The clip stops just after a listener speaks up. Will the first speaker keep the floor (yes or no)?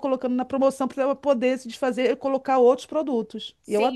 no